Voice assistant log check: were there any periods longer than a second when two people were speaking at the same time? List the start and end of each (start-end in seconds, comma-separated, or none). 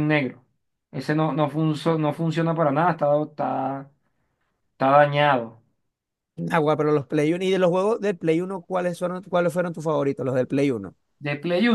none